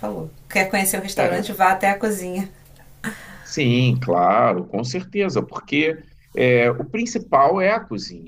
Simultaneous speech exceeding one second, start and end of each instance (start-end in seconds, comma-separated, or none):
none